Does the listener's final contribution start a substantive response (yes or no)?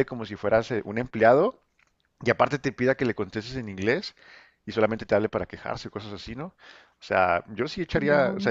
no